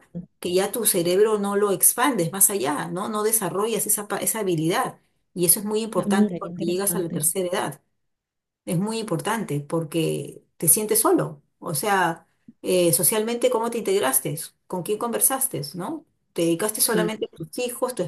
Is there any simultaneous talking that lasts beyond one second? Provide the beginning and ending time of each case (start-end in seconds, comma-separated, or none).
6.0-7.3